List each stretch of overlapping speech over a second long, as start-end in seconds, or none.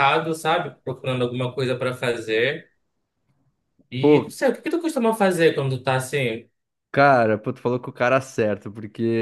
none